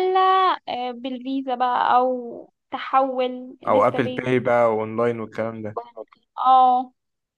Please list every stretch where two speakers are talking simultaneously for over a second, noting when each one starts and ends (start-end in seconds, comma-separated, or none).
none